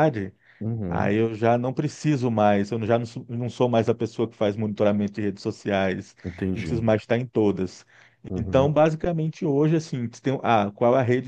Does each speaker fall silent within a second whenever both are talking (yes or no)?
yes